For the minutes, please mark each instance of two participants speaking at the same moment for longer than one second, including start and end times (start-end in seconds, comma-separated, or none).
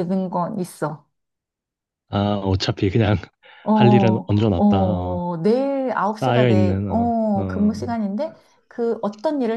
6.2-7.9